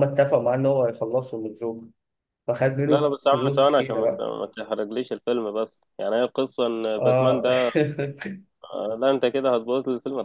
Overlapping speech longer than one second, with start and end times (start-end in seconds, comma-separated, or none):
2.9-4.3